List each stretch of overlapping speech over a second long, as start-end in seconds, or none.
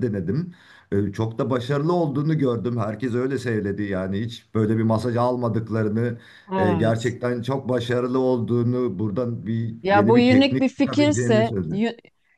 9.8-11.6